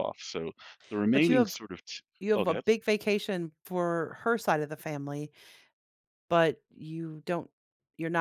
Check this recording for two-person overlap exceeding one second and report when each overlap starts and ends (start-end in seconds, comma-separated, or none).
none